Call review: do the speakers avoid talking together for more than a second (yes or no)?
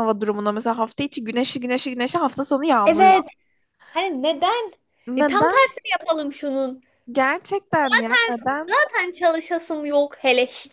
yes